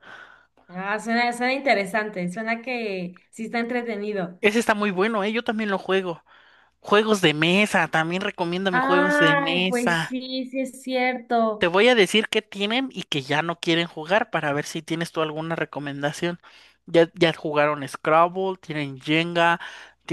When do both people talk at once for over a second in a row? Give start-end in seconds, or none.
8.7-10.2